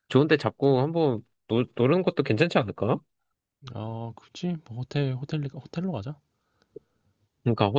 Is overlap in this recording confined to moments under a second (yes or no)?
yes